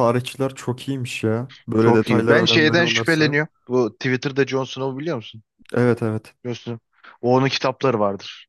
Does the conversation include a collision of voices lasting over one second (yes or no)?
yes